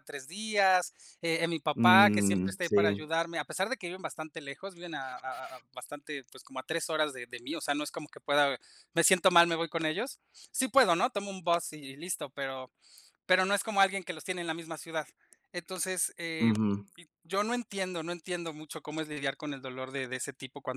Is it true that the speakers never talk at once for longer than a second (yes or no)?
no